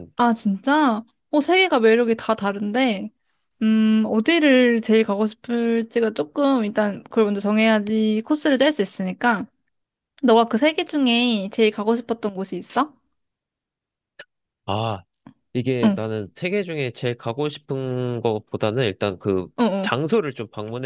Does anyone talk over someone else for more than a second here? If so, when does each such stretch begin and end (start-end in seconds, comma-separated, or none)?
none